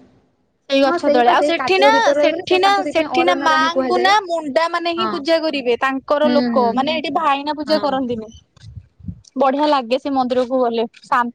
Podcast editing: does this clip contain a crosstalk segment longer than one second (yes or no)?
yes